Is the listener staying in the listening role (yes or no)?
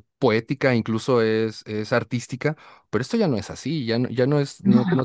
yes